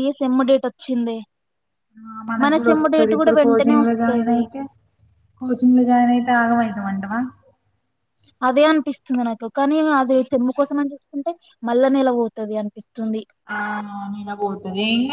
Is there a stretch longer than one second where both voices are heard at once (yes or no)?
yes